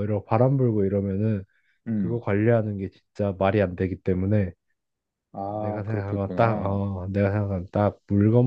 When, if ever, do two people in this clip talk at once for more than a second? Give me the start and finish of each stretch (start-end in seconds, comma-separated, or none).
5.5-6.8